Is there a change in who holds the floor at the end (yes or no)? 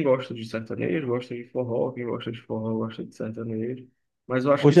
no